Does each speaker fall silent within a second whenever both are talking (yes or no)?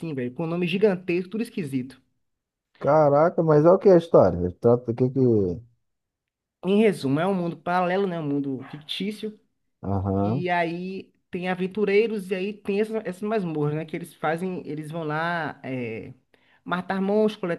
yes